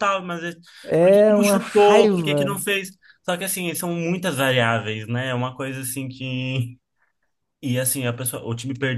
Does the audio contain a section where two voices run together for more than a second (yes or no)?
yes